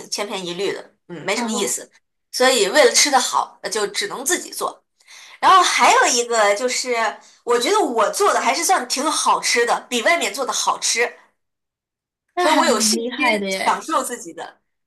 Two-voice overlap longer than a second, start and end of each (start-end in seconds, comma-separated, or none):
12.4-13.8